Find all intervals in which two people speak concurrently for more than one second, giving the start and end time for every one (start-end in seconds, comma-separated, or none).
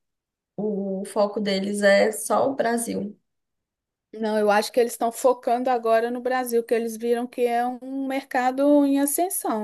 none